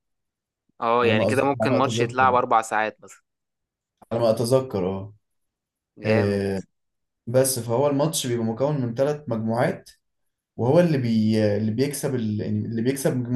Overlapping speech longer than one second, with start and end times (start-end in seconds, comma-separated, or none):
1.0-2.4